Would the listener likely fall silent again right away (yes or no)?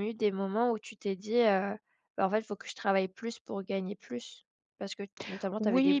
no